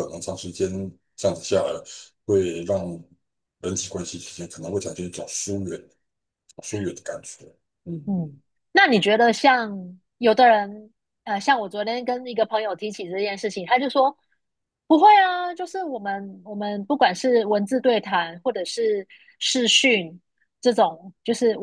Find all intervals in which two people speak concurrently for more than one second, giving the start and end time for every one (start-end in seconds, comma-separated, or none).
none